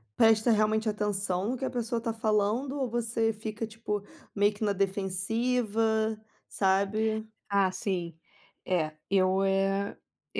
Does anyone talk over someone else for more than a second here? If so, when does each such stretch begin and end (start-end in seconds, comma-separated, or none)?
none